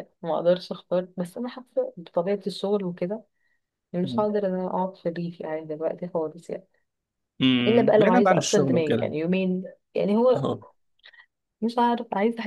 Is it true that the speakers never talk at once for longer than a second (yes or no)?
no